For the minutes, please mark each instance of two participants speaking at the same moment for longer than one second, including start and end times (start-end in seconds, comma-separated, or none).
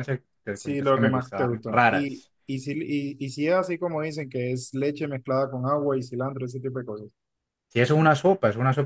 0.5-2.3